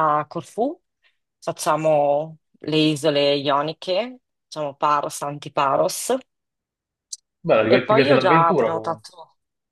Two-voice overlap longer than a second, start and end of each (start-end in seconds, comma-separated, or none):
7.7-9.1